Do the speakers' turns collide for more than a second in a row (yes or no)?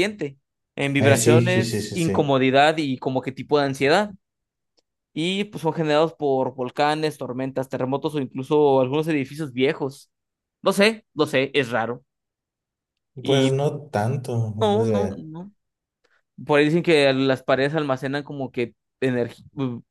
yes